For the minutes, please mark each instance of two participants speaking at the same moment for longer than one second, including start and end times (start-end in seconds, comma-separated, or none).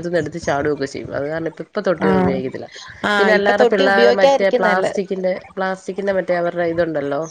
3.2-4.9